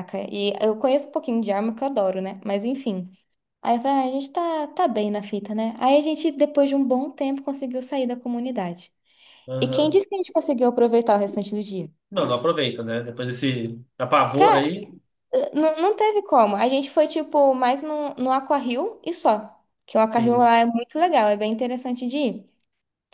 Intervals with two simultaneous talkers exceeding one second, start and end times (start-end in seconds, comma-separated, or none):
none